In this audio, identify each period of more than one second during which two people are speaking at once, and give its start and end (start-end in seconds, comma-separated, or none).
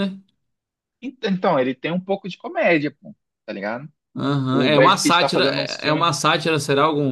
4.5-6.1